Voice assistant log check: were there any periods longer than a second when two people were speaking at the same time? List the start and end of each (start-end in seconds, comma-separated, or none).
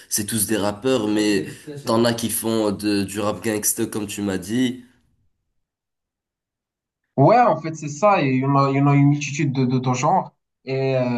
none